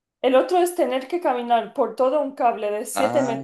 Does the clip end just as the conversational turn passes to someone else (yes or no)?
no